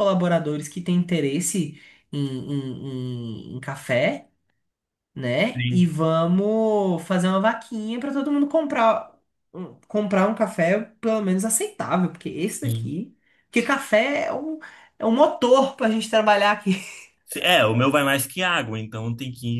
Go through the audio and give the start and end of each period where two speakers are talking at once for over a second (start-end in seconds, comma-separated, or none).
none